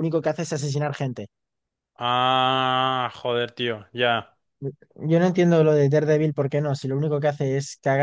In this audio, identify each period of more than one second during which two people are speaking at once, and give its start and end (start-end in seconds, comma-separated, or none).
none